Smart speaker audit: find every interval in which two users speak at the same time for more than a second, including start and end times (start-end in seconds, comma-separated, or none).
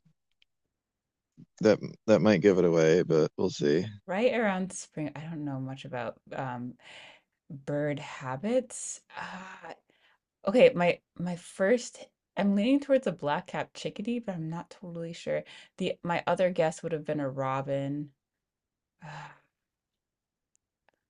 none